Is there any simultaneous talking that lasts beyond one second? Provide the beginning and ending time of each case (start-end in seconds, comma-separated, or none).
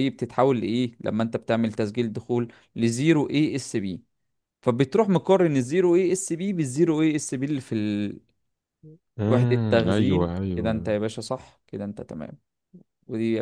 9.3-10.9